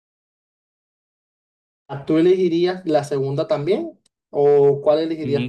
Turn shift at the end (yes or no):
yes